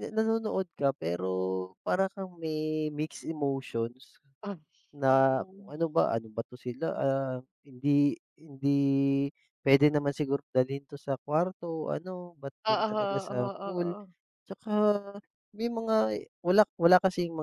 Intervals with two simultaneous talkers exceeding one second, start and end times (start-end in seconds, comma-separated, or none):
12.7-13.9